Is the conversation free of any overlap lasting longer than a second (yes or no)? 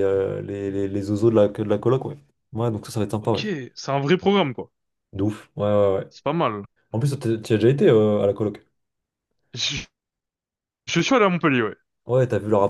yes